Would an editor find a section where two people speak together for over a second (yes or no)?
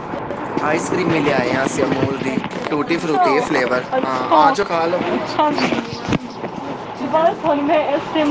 no